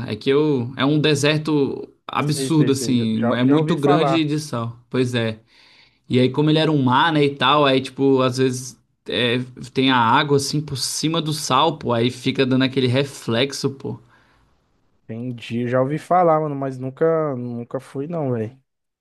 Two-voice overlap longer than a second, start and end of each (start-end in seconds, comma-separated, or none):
2.2-4.2